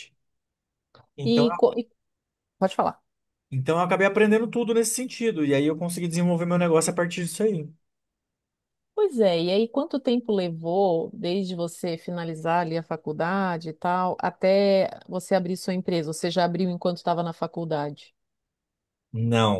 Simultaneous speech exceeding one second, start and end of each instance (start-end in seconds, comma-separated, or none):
none